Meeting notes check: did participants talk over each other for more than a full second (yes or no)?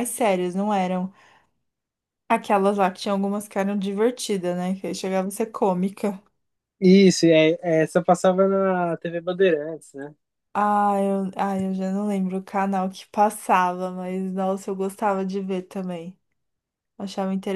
no